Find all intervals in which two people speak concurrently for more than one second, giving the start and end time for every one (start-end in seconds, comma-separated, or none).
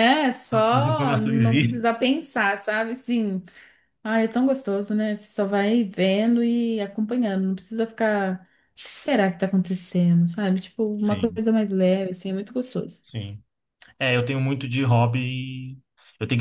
0.5-1.9